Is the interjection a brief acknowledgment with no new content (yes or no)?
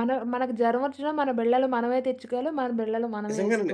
no